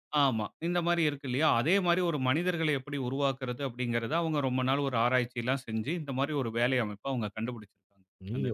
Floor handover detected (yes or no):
yes